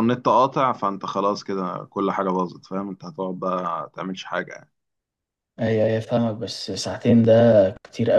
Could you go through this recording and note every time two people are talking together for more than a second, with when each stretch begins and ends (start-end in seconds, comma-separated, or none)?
none